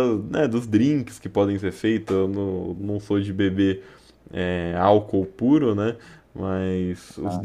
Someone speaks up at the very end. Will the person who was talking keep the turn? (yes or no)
yes